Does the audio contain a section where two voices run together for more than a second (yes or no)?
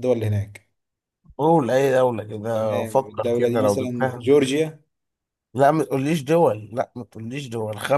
yes